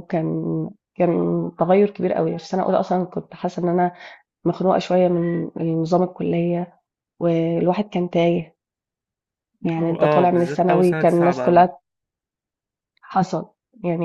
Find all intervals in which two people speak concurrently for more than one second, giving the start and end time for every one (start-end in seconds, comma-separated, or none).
9.8-11.7